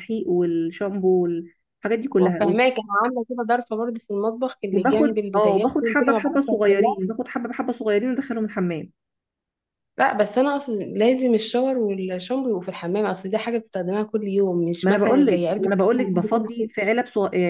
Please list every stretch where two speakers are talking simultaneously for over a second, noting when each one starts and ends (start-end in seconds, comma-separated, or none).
4.7-7.0, 14.8-16.7